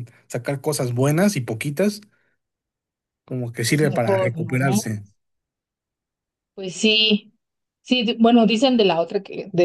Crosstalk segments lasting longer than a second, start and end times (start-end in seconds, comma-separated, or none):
3.7-4.9